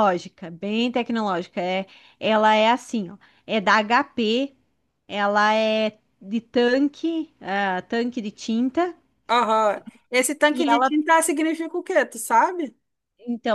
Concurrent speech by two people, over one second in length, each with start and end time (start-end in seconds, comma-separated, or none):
none